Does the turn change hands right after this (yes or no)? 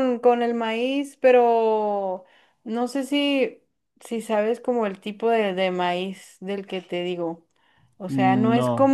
no